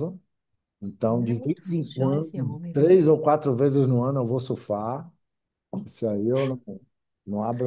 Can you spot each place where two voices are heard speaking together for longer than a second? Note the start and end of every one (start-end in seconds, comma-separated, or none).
1.1-3.0